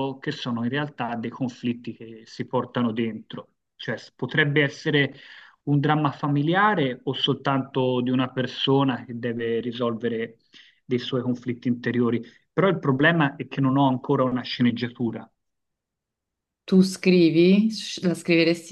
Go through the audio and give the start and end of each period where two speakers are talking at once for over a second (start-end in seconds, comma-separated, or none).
none